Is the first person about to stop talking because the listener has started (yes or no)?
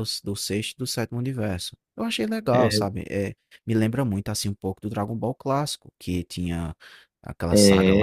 no